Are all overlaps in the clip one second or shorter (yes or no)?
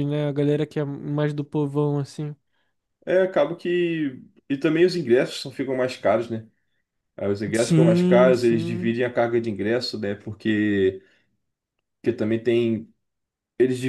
no